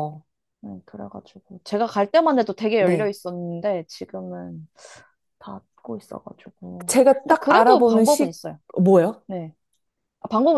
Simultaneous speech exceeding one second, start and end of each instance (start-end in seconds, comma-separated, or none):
6.9-8.4